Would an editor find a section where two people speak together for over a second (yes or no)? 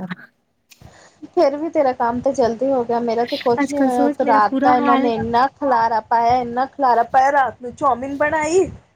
yes